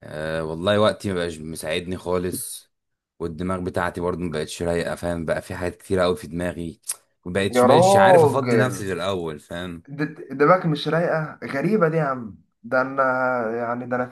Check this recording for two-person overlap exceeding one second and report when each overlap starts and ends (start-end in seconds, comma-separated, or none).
7.5-8.9